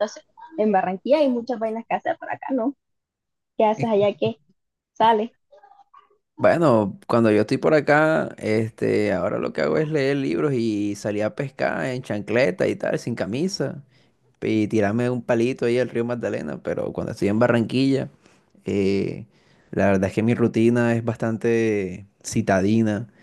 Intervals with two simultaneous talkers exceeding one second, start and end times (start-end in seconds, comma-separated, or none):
none